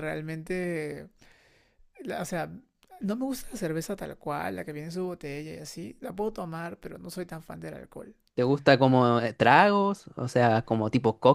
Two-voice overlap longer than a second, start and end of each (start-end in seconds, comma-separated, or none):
none